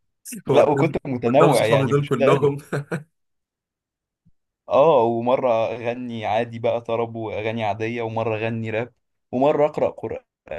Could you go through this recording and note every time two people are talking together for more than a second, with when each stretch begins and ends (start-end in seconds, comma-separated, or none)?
0.5-2.5